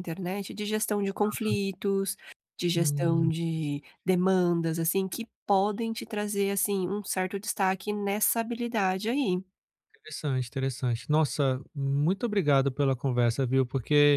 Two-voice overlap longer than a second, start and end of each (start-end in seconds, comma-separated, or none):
none